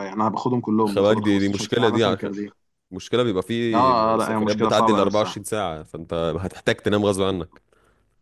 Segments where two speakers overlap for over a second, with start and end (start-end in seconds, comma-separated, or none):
0.9-2.3, 3.7-5.4